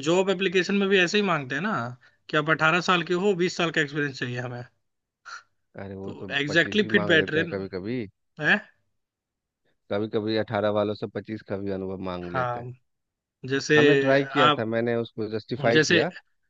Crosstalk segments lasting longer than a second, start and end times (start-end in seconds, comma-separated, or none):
6.0-7.6